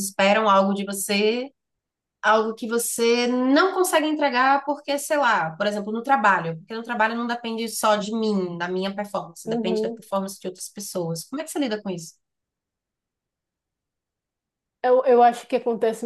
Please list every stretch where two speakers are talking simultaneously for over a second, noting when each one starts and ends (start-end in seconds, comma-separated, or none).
none